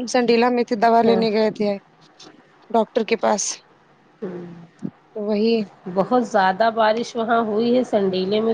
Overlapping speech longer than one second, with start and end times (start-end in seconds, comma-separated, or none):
none